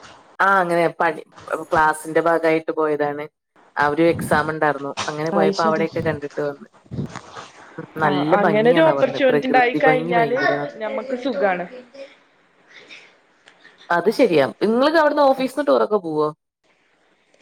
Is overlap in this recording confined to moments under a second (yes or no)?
no